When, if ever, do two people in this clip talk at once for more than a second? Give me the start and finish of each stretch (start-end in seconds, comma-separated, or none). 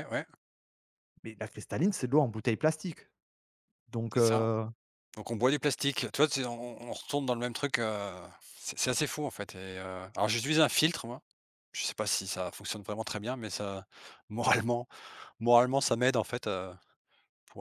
none